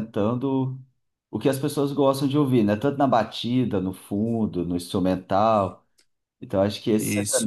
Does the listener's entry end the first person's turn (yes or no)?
no